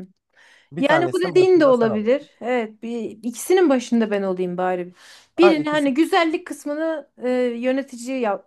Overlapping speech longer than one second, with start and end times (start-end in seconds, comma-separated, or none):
0.8-2.3